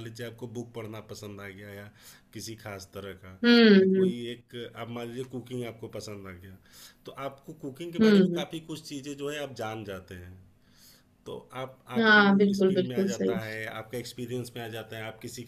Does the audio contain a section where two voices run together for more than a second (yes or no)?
yes